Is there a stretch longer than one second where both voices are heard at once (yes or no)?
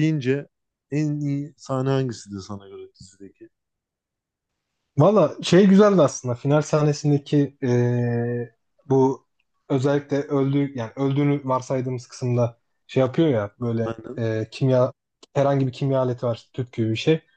no